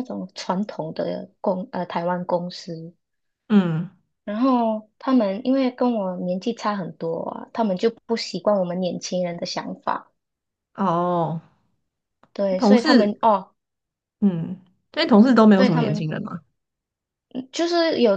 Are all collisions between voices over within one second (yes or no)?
yes